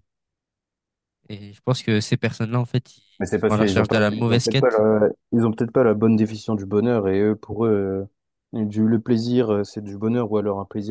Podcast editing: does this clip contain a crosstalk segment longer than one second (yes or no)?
yes